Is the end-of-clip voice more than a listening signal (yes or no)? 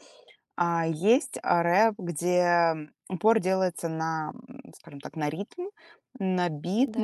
no